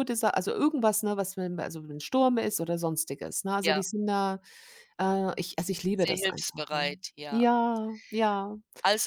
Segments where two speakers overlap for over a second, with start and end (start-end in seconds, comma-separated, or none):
6.0-7.4